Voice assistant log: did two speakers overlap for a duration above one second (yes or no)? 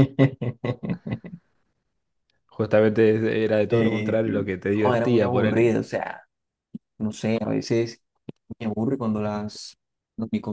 yes